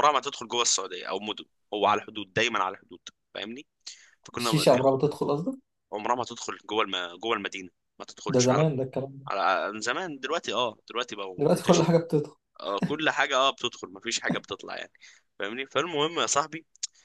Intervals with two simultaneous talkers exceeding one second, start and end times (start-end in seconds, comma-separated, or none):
none